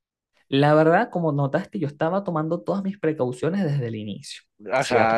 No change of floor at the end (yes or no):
no